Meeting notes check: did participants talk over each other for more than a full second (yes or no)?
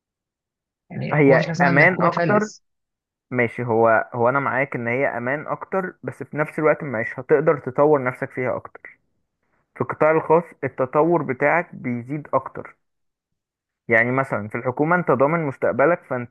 yes